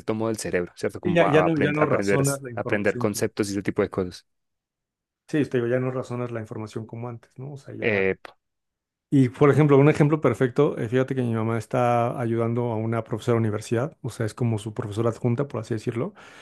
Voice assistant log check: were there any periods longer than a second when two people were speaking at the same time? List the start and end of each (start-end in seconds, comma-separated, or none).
1.0-3.3